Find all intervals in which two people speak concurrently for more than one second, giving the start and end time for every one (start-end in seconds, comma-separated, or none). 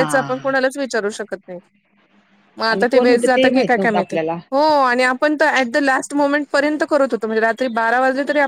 2.7-4.2